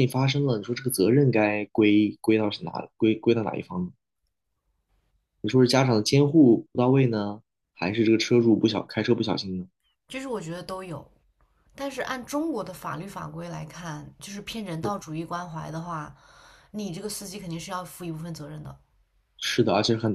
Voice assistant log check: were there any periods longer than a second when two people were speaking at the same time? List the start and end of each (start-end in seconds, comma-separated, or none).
none